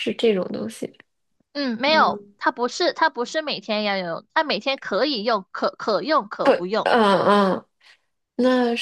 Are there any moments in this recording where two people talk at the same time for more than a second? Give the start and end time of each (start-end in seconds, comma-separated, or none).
none